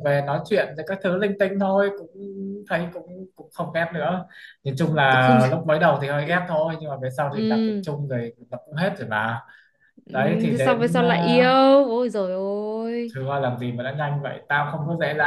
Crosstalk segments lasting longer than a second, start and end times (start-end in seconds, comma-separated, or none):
10.1-11.5